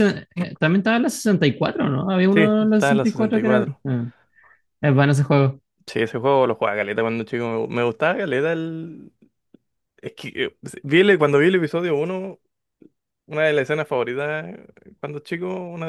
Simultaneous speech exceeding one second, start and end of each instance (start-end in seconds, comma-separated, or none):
2.3-3.8